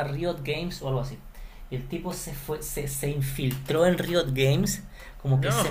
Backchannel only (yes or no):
yes